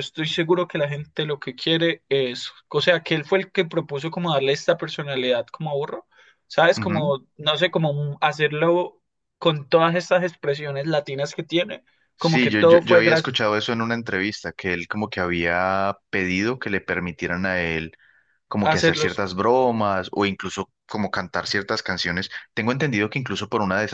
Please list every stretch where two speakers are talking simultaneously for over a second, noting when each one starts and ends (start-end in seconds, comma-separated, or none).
12.2-13.4